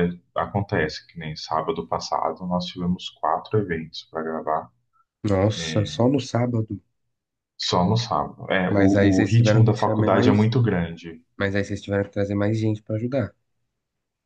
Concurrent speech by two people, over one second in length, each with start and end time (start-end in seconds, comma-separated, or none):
8.7-10.5